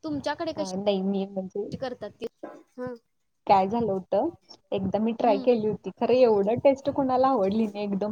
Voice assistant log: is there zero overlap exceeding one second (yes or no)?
yes